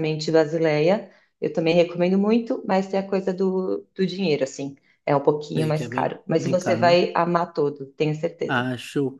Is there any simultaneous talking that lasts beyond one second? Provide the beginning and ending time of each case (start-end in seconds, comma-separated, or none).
5.6-7.0